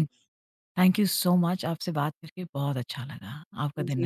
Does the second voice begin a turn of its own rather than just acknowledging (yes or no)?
yes